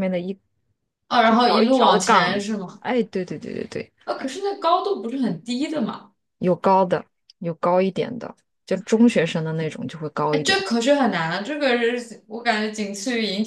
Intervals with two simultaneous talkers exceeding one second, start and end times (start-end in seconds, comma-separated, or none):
1.3-2.8